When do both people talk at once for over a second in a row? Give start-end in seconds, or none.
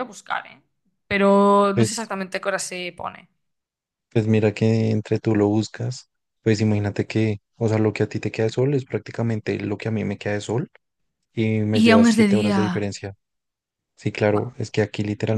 11.7-12.9